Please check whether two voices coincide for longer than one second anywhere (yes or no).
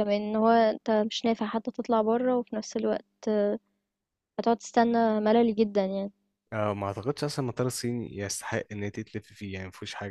no